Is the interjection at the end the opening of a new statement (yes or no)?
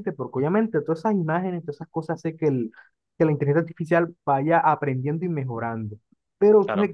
no